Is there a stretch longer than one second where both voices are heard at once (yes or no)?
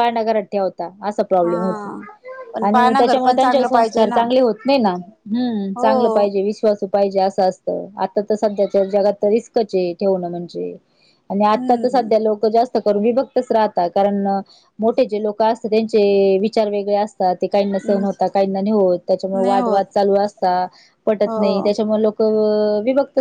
yes